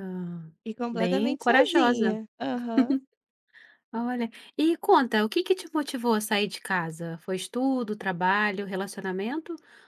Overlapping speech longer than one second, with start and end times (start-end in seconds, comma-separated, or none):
0.9-2.2